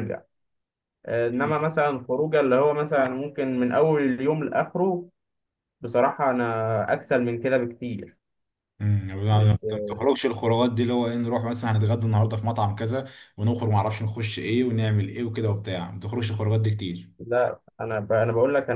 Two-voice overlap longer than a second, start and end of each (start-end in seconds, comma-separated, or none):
none